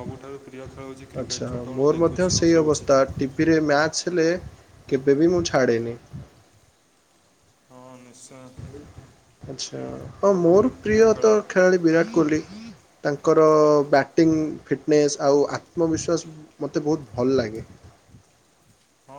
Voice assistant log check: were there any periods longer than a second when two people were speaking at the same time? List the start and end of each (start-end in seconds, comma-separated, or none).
none